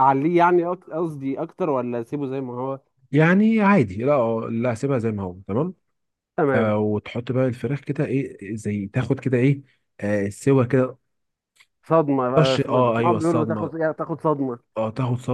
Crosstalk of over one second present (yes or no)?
yes